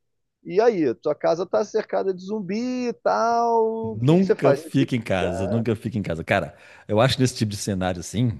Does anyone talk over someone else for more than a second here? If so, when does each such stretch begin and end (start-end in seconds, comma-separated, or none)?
3.8-5.6